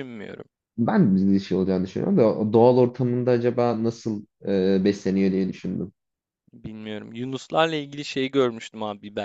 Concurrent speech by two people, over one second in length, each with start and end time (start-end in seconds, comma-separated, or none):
none